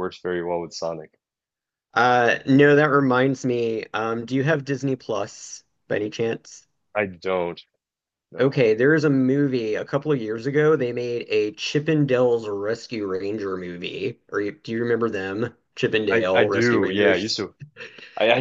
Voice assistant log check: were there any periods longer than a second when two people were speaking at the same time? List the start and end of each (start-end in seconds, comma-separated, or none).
16.1-17.3